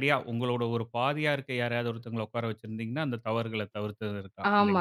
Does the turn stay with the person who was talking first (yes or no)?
no